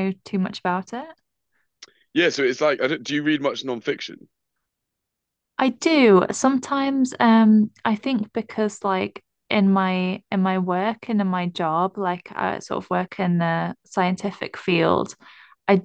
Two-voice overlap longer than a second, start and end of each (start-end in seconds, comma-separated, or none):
none